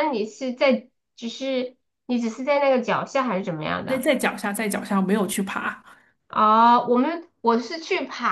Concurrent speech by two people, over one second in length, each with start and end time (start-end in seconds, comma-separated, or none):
none